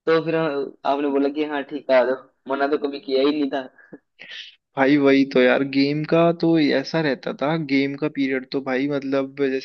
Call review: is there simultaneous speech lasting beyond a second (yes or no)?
no